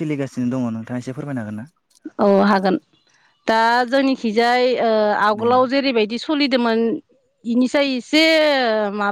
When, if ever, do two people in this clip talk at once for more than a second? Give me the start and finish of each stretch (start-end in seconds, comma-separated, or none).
none